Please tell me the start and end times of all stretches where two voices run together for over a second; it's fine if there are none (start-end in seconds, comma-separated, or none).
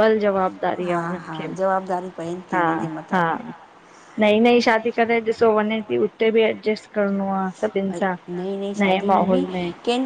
none